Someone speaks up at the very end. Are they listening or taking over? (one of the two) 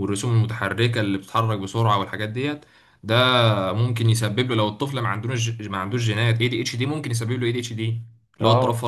taking over